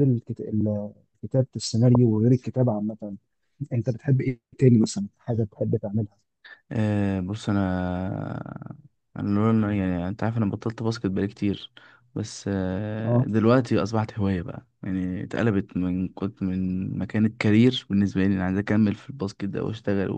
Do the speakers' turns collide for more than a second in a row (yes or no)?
no